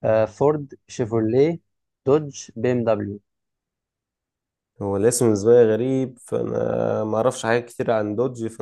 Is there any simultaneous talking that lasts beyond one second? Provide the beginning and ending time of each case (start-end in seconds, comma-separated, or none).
none